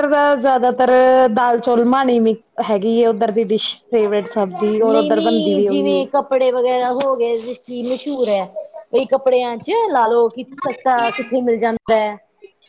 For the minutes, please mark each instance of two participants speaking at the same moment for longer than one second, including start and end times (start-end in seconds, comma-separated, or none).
4.8-6.0